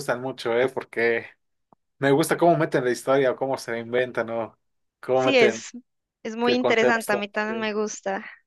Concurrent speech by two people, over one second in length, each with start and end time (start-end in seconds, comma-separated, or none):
6.4-7.7